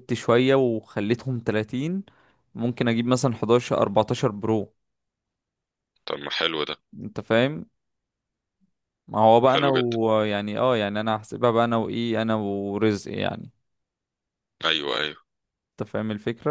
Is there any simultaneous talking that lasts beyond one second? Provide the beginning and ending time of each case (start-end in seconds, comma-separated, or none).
none